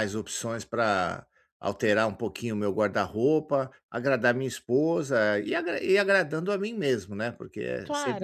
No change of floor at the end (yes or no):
no